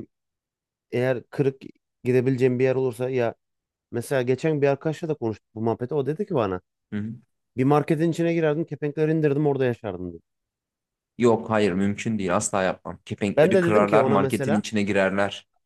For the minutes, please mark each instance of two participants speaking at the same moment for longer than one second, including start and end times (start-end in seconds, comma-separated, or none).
13.4-14.7